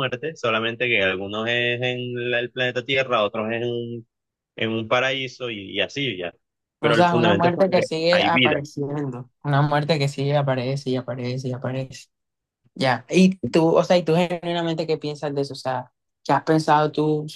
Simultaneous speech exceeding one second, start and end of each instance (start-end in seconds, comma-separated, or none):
6.8-8.6